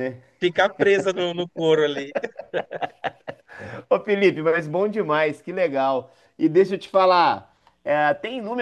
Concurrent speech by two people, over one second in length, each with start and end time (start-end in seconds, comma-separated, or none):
none